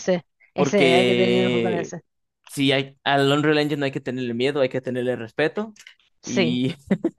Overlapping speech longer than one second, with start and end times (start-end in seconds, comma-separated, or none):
0.6-1.9